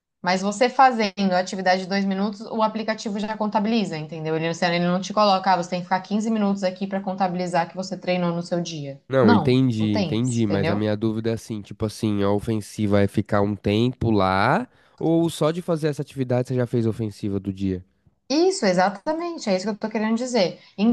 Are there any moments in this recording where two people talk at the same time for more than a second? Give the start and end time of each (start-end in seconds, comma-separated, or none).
9.1-10.8